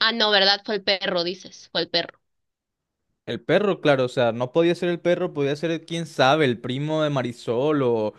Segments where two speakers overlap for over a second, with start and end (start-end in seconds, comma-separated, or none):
none